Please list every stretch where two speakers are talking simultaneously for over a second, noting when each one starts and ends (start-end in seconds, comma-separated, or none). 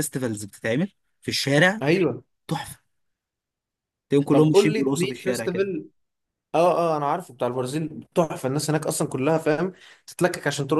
4.3-5.7